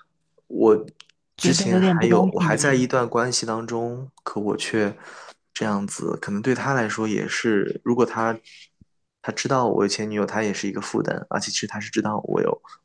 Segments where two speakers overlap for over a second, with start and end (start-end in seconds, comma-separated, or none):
1.4-2.9